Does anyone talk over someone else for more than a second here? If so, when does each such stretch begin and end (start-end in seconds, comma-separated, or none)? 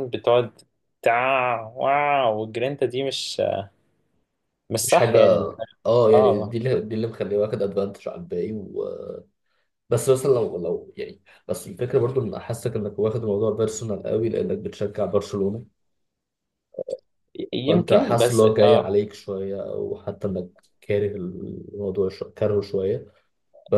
17.7-18.9